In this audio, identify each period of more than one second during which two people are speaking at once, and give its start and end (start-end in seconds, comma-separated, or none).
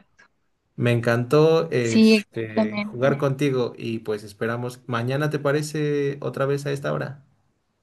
1.8-3.2